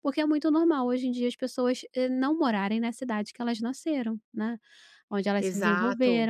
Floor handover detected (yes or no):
no